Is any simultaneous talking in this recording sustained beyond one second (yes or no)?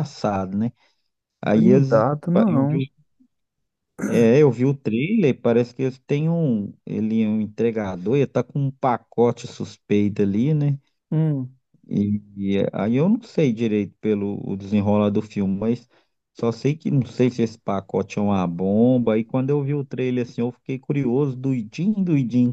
yes